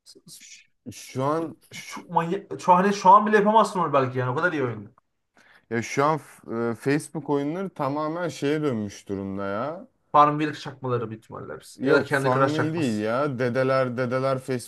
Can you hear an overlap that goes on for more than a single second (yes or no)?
yes